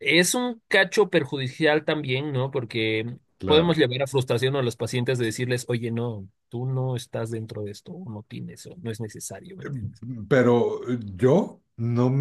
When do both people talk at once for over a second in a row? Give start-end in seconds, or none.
none